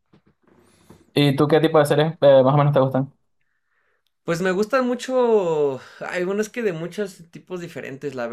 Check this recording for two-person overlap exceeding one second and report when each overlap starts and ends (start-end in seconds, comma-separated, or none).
none